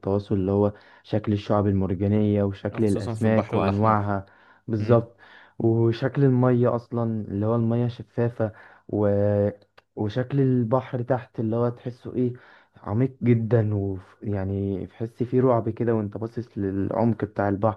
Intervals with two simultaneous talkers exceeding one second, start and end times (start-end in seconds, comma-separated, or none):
2.7-4.1